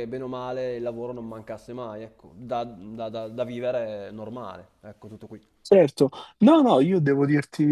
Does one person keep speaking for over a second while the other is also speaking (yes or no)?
no